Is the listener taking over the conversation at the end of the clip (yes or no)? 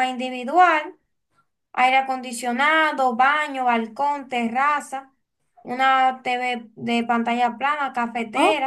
yes